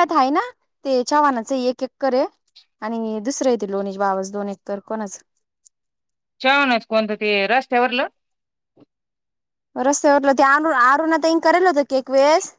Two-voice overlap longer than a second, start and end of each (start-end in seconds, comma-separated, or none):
none